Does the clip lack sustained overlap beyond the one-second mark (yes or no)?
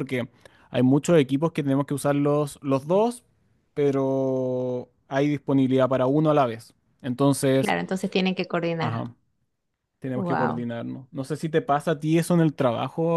yes